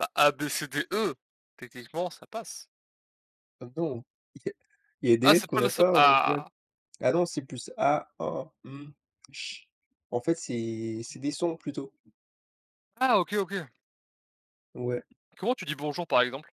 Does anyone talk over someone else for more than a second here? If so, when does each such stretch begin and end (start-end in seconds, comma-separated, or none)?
5.2-6.4